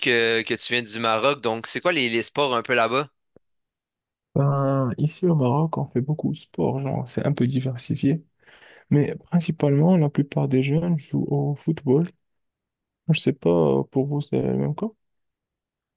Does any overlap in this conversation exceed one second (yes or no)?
no